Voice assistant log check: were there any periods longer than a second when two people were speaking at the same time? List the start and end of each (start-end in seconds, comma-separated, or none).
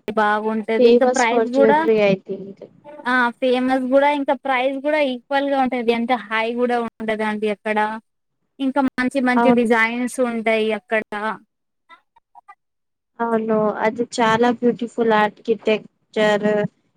none